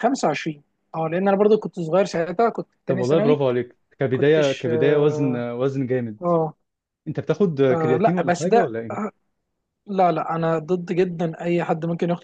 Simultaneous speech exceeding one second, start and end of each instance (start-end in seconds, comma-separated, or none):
4.1-5.5, 7.7-9.1